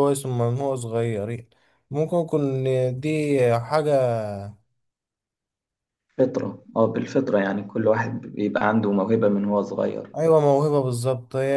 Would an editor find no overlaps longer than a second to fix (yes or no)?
yes